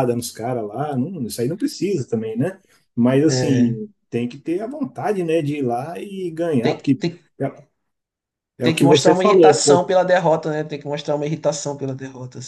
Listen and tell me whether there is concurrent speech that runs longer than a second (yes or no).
yes